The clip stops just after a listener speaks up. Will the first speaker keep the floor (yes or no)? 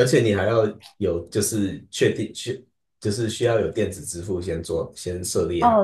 no